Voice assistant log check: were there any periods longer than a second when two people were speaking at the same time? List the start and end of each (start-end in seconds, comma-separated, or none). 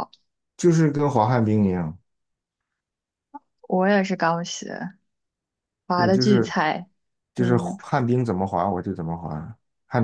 none